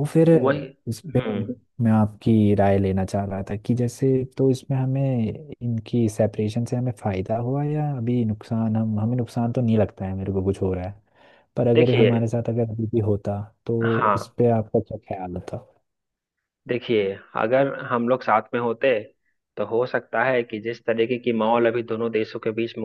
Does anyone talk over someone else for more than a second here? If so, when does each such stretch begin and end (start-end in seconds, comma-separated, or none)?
none